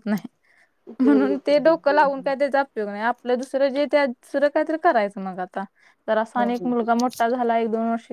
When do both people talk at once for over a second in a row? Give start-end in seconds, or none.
1.0-2.3